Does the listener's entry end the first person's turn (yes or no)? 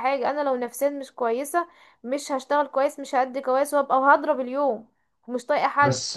yes